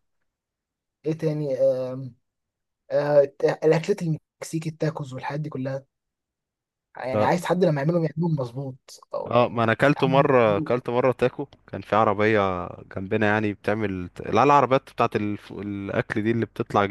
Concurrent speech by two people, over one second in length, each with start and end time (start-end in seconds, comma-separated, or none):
9.3-10.8